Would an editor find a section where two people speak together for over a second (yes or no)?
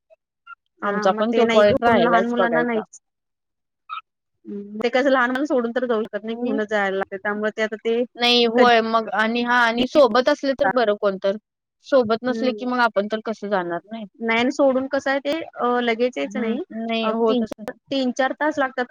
yes